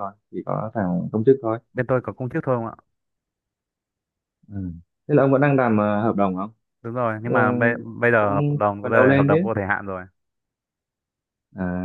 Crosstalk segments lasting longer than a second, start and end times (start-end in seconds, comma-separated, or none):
8.2-9.5